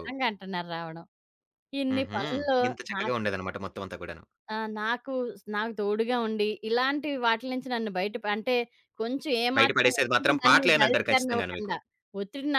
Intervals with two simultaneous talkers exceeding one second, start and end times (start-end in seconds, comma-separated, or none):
9.6-11.7